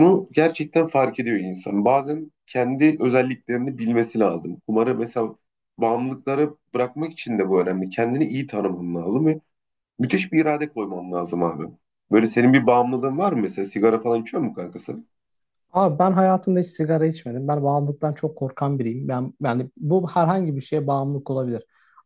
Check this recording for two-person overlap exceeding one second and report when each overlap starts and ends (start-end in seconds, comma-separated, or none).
none